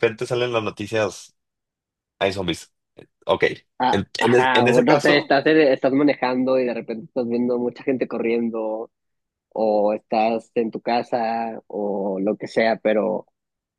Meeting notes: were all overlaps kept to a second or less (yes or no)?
no